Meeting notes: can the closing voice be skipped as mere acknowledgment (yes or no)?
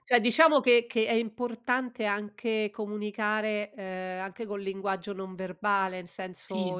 yes